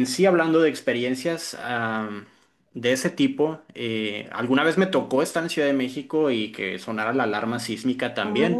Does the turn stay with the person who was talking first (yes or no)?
yes